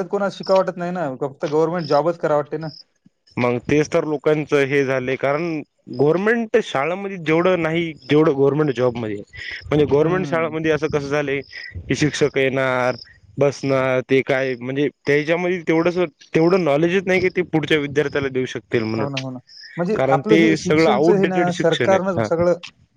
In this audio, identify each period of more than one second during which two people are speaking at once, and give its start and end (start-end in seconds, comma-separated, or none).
20.6-22.3